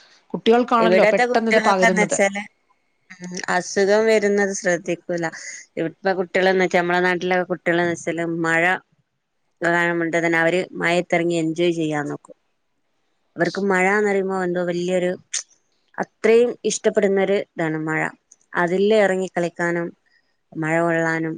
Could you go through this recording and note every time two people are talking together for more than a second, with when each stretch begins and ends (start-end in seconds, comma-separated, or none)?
0.8-2.2